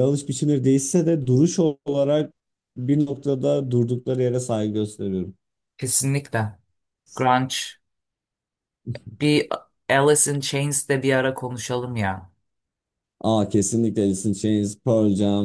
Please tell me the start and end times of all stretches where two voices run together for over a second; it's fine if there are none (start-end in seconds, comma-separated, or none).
none